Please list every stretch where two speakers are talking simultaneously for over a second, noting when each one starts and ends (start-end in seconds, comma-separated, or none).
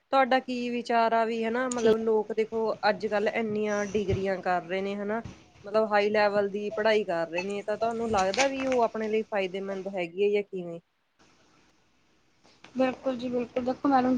none